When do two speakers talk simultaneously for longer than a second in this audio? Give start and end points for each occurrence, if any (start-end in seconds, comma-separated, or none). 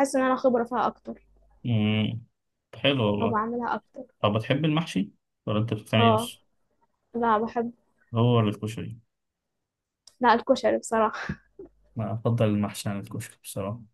none